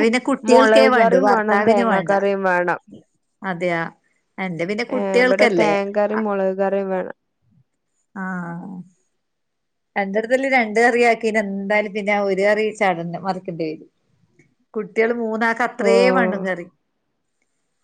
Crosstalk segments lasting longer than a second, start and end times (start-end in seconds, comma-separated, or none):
0.5-2.1